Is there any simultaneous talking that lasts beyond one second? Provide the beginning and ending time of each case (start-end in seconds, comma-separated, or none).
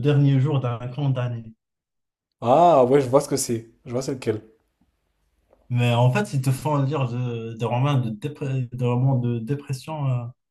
none